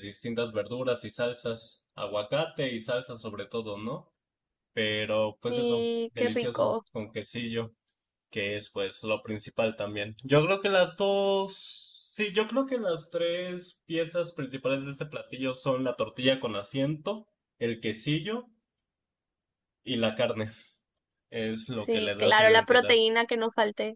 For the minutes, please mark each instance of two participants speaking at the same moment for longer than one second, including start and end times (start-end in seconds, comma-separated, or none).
5.5-6.9, 21.8-23.0